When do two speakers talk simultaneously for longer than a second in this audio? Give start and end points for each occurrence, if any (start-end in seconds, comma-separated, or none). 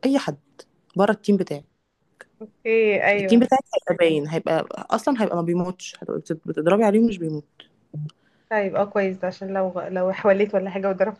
none